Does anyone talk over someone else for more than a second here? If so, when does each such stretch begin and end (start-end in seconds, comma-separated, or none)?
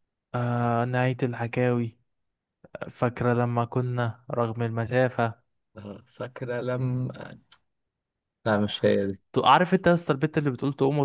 none